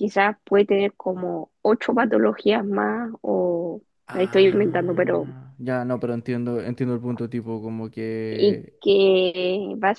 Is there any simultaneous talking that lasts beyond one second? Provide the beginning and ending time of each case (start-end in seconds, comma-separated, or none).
4.1-5.3